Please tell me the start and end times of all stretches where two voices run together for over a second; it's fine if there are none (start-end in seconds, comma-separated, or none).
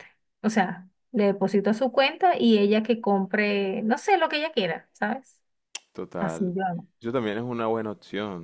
none